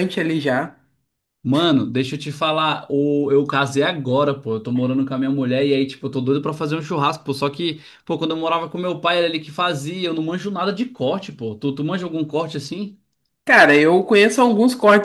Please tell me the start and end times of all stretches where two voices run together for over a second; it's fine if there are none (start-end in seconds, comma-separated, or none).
none